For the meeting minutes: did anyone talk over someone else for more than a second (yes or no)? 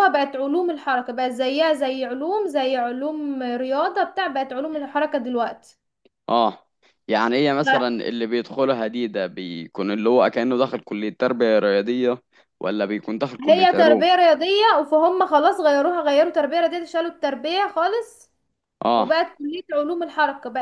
no